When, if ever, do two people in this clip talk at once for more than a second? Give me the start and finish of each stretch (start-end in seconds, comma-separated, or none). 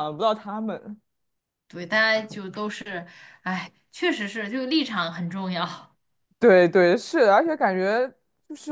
none